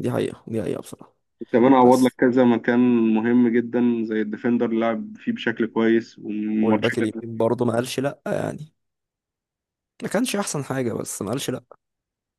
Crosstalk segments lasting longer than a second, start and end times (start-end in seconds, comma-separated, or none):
none